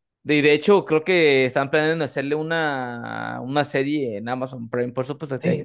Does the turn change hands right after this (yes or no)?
yes